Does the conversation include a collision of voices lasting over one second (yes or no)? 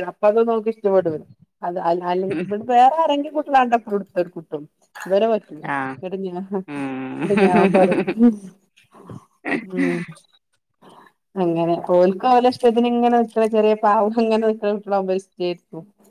yes